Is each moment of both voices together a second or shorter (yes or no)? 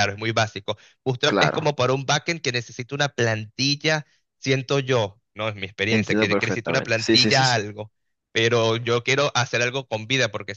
no